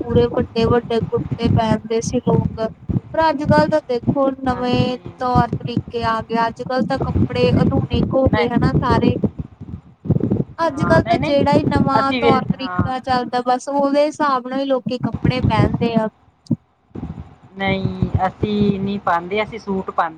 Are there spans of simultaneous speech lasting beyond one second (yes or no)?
yes